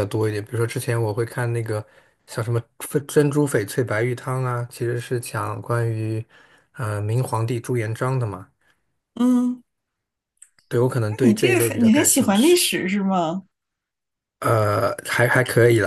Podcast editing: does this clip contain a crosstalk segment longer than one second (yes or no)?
yes